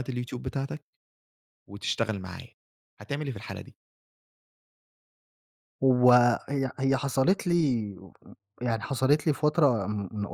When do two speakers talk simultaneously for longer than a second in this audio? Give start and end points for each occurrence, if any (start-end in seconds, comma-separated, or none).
none